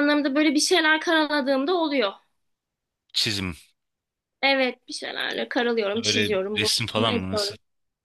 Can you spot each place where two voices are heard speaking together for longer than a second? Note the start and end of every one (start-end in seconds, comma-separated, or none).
6.0-7.5